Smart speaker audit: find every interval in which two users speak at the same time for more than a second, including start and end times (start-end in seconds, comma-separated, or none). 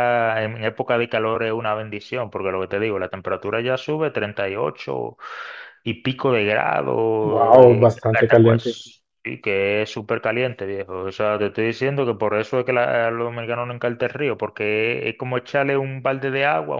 7.2-8.8